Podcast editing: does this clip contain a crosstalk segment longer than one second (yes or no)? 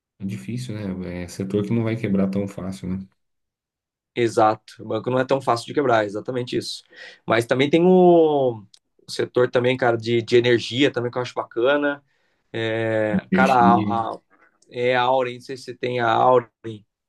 no